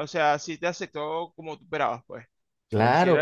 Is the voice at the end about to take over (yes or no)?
yes